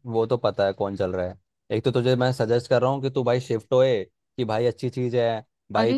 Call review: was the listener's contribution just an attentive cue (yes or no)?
no